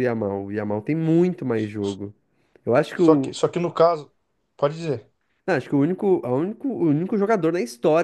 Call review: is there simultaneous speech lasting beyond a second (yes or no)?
no